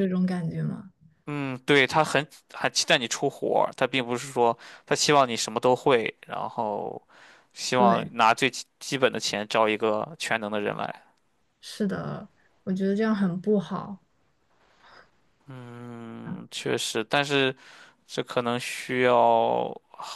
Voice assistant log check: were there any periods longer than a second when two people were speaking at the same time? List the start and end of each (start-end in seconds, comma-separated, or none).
none